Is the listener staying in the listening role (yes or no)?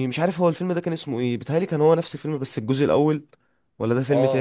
no